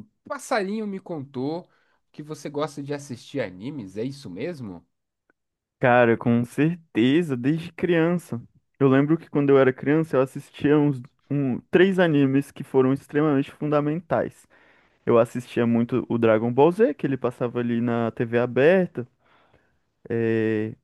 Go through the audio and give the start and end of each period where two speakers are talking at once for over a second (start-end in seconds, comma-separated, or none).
none